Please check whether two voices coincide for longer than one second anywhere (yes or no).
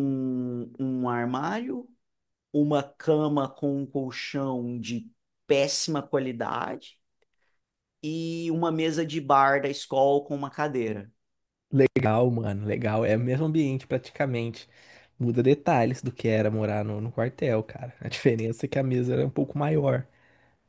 no